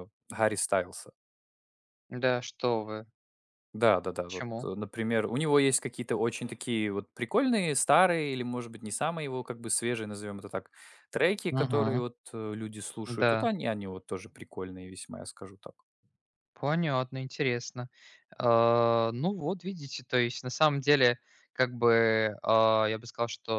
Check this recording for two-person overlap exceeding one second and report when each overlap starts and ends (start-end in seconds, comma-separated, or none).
none